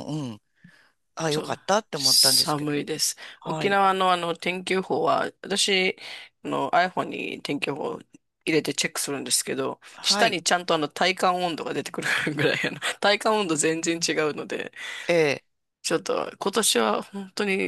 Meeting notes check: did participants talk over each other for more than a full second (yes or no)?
yes